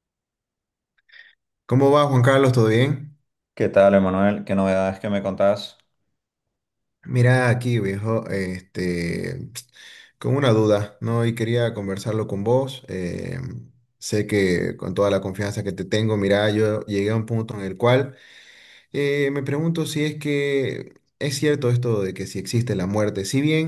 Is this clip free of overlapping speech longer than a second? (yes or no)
yes